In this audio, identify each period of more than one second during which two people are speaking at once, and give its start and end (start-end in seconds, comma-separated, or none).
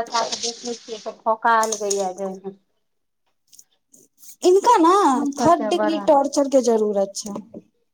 none